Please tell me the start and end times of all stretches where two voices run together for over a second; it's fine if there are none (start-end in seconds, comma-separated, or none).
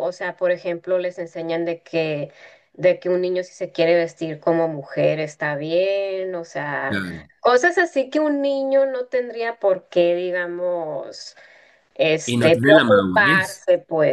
12.2-13.6